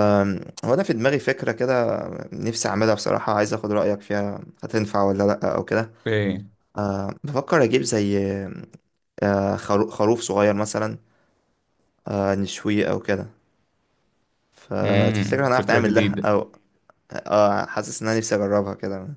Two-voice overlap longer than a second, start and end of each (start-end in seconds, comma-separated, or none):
14.8-16.3